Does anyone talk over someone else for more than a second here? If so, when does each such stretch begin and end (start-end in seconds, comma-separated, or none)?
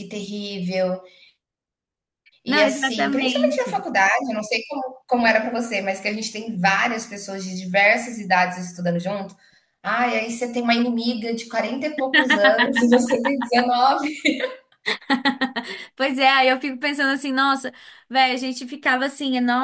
2.5-3.8